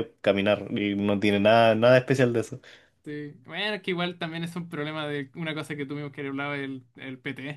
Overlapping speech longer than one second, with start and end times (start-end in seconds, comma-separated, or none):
none